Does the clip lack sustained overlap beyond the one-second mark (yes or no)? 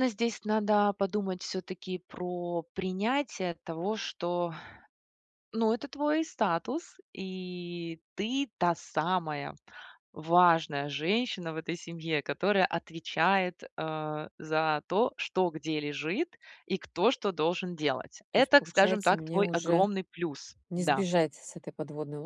no